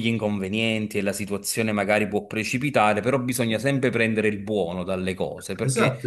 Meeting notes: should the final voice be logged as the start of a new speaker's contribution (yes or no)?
yes